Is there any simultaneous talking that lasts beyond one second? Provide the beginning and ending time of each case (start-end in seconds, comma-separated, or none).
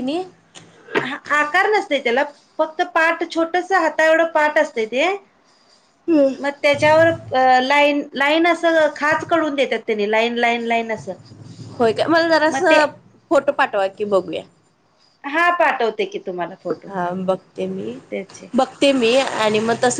none